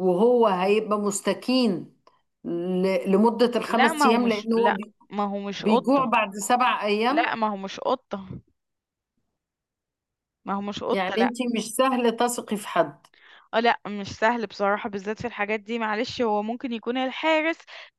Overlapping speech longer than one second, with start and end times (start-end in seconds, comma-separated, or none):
3.7-4.9